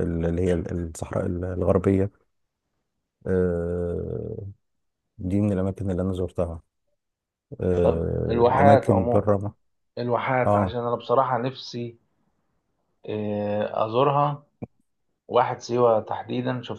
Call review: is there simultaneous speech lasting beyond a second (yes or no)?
yes